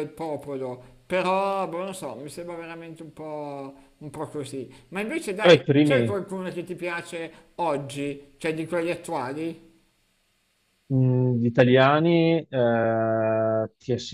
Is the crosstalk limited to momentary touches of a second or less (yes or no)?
yes